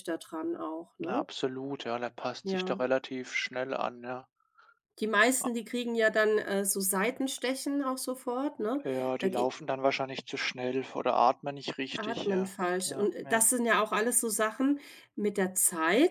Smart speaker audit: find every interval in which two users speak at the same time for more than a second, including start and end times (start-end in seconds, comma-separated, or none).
11.9-13.5